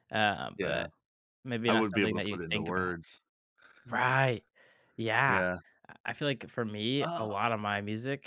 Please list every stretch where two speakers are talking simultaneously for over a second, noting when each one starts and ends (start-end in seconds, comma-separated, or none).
1.7-2.9